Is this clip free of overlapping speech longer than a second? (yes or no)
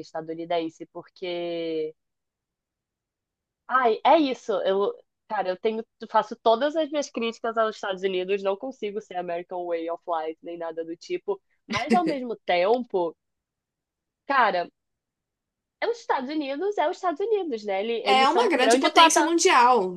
no